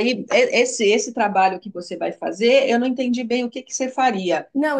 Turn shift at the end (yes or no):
no